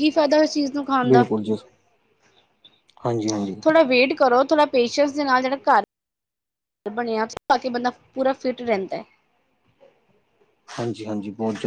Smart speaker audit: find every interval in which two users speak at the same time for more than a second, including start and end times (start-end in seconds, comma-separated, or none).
none